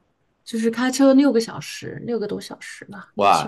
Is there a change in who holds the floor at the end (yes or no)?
yes